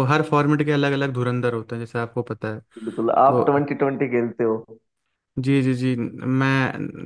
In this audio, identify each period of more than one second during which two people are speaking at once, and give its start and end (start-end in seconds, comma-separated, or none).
none